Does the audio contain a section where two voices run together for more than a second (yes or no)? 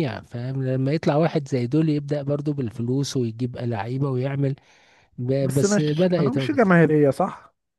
yes